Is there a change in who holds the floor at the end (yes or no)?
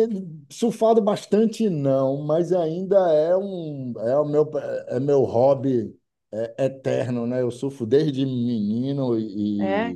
no